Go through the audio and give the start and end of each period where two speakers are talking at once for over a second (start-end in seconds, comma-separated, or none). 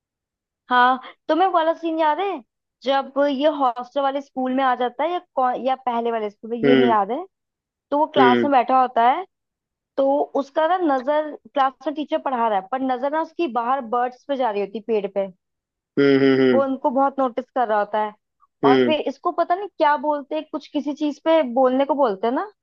none